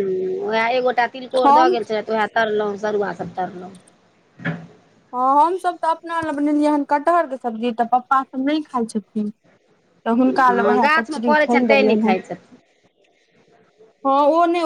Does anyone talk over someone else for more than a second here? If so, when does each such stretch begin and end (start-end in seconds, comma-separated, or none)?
10.5-12.1